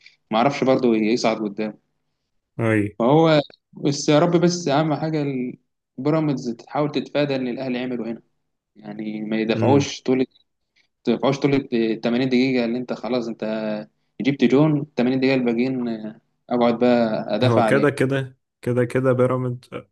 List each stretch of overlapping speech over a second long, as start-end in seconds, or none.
none